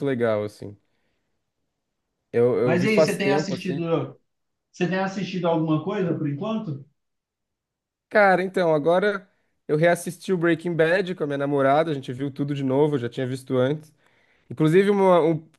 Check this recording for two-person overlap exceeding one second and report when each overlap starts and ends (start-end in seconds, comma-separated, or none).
2.6-3.9